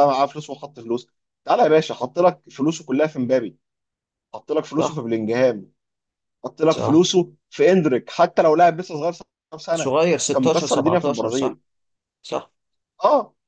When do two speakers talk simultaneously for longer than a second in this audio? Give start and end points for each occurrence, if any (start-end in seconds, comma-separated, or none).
9.7-11.6